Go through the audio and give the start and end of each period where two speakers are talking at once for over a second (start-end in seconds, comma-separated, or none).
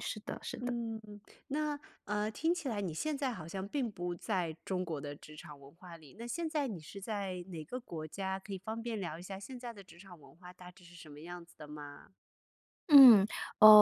none